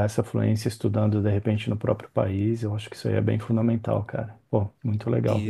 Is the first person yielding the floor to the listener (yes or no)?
yes